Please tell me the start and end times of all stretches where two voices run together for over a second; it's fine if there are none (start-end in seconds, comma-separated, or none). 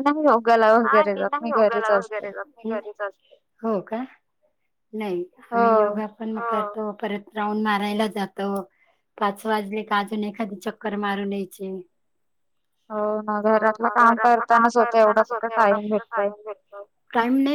14.5-16.3